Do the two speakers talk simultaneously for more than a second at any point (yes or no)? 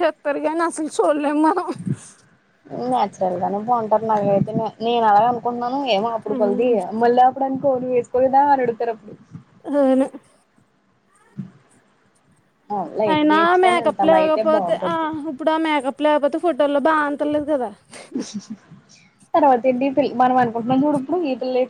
yes